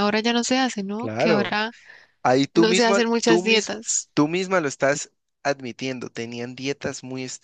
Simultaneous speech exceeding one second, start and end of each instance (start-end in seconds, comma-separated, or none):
2.5-4.1